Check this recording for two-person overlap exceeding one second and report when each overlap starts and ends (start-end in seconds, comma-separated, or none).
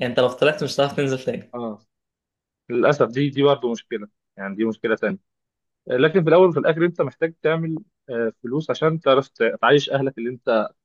none